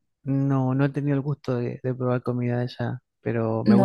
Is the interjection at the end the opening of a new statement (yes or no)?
yes